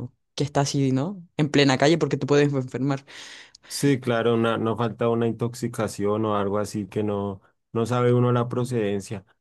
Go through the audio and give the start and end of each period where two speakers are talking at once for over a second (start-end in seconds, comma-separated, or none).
none